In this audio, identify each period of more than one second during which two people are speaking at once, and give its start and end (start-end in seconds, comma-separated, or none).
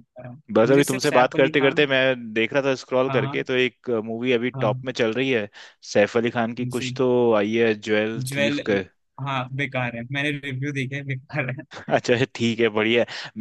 0.5-1.9